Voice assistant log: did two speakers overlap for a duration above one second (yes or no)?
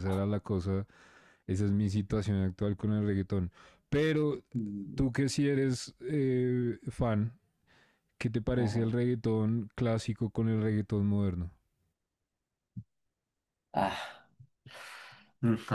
no